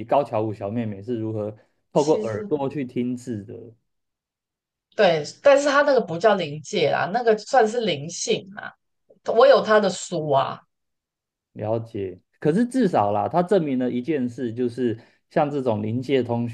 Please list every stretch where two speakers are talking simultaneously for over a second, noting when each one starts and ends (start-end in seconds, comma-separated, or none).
none